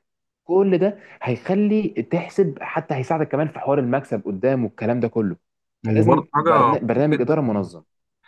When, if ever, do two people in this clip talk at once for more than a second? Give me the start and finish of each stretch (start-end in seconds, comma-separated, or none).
5.9-7.3